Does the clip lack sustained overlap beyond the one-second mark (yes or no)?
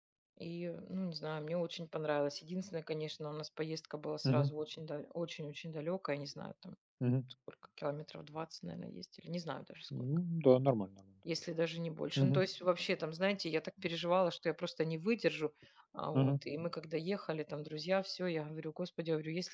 yes